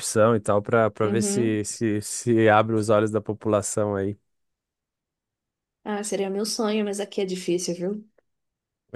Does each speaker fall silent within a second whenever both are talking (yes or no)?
yes